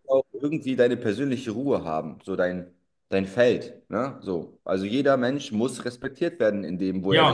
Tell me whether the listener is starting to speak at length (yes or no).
yes